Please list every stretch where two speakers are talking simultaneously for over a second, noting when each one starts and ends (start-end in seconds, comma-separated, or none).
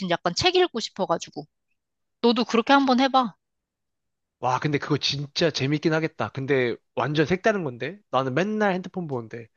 none